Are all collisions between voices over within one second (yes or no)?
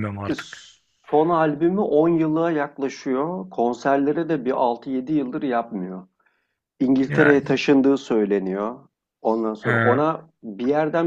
yes